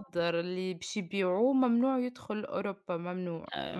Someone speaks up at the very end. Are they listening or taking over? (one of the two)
taking over